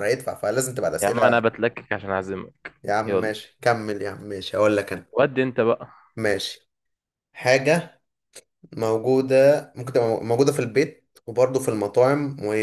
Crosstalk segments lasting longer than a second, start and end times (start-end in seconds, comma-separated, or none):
none